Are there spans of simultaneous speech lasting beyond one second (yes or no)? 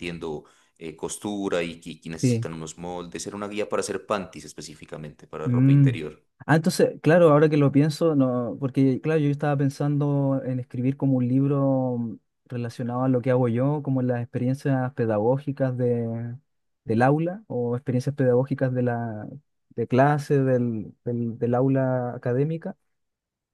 no